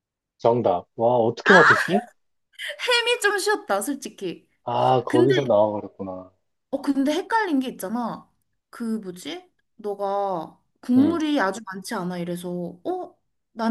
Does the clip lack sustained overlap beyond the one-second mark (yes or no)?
yes